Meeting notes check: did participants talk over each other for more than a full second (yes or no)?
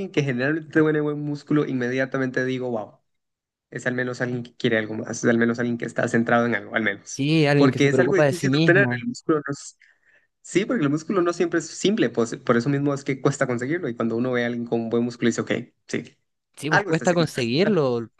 yes